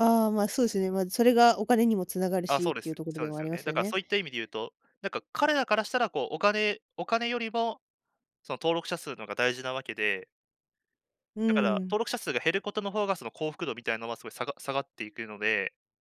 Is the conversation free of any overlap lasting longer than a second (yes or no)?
no